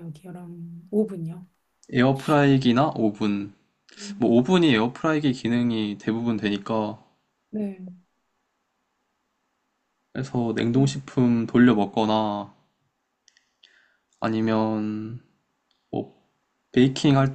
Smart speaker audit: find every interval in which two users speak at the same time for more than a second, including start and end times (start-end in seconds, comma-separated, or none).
none